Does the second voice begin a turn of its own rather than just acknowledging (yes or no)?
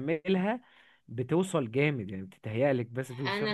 yes